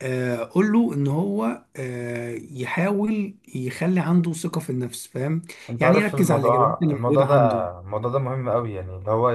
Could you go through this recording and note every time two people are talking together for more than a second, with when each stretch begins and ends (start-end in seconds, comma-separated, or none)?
5.8-7.6